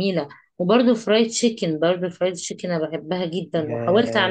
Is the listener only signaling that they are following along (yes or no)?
no